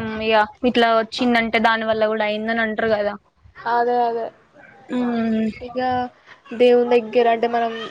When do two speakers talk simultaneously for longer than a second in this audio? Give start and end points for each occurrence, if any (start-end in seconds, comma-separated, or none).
none